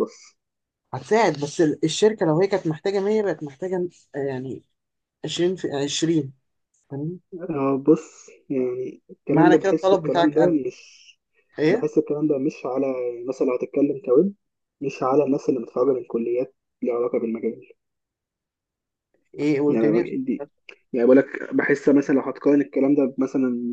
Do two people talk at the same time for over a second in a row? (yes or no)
yes